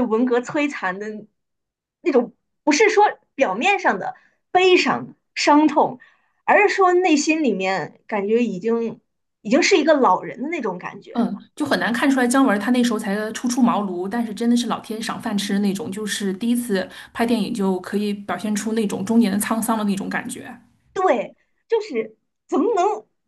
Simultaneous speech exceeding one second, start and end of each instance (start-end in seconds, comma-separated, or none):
none